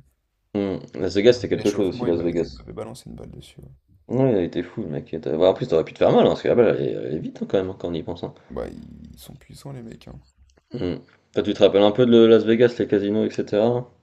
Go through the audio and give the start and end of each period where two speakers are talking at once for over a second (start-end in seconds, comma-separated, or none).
1.2-2.6